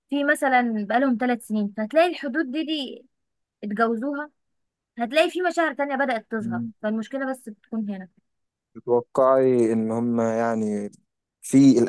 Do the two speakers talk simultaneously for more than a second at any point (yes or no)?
no